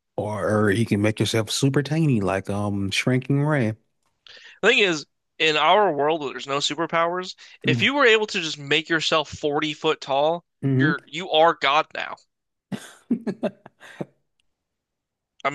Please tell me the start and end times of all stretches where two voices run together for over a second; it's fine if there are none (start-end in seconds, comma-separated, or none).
none